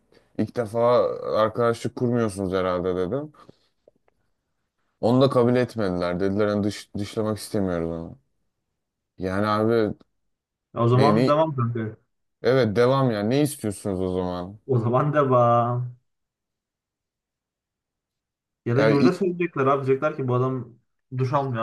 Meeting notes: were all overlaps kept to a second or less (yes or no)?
yes